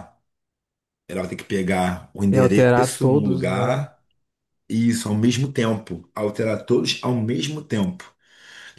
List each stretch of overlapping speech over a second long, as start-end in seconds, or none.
2.3-3.9